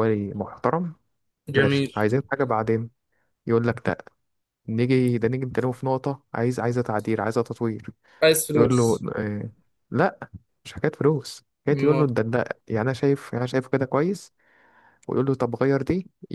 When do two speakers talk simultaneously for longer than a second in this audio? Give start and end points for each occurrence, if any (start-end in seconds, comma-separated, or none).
none